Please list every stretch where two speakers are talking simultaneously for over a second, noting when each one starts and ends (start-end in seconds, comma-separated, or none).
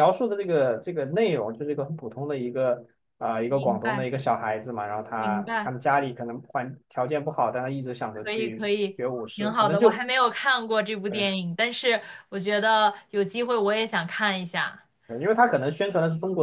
8.1-10.0